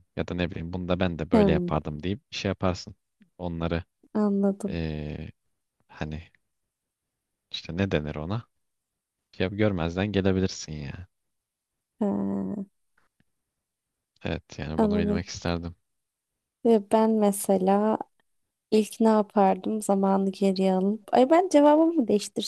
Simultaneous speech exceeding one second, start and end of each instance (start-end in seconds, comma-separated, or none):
none